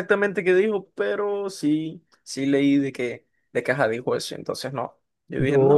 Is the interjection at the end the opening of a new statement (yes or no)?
yes